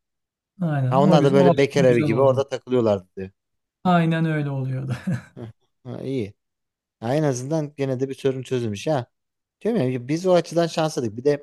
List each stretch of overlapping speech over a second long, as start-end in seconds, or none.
0.9-2.4